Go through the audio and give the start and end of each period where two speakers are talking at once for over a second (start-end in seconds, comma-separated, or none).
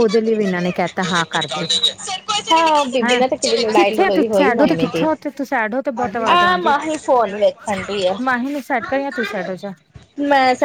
3.0-5.0